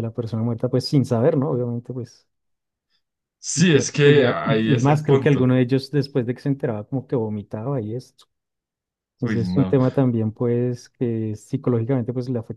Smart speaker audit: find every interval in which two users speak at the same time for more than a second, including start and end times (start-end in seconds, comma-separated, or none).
3.5-5.5